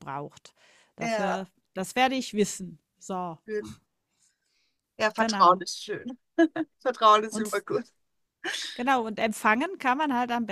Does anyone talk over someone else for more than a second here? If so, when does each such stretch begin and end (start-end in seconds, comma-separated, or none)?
none